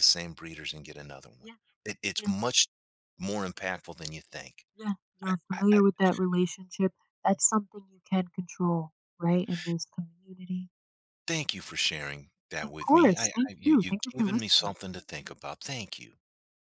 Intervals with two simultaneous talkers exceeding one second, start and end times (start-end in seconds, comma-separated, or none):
12.6-14.8